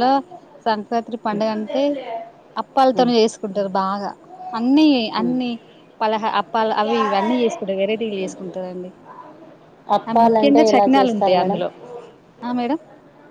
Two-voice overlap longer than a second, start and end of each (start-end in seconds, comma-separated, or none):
10.1-11.6